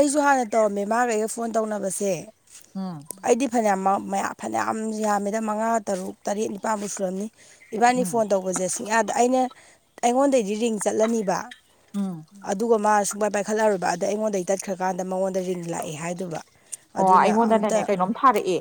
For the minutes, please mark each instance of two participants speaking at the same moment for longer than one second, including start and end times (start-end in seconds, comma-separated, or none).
none